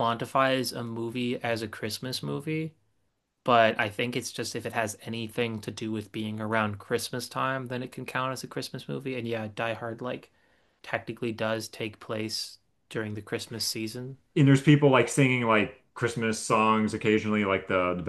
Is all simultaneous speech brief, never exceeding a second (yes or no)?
yes